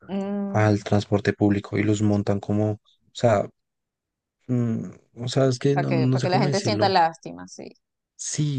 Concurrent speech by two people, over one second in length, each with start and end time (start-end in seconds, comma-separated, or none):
5.7-6.9